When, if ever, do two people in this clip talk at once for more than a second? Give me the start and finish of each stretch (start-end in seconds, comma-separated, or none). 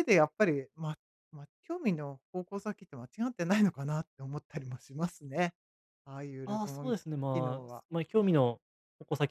6.5-7.8